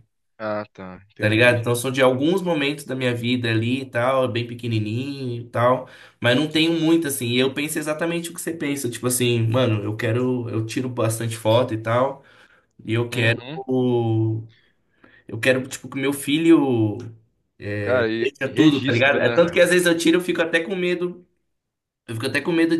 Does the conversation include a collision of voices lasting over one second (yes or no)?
yes